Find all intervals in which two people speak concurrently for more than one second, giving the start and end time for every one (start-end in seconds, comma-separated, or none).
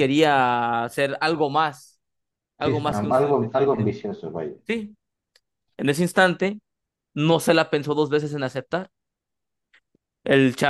2.6-3.9